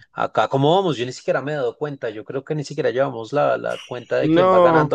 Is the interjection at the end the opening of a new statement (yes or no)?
no